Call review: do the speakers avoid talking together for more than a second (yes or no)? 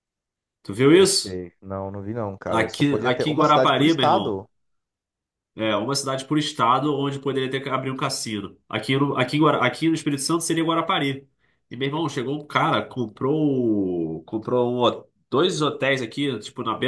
no